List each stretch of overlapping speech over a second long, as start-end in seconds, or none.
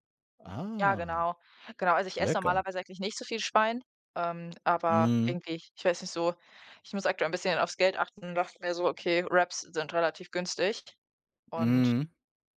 none